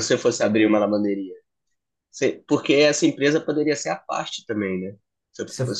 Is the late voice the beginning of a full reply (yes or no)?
no